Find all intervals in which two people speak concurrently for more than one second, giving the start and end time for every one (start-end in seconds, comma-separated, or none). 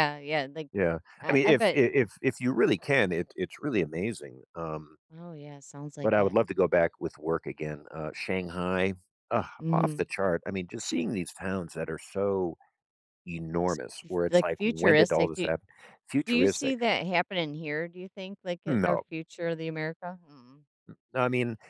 14.3-15.5